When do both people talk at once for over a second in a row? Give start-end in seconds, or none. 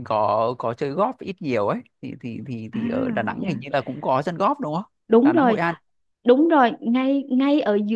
none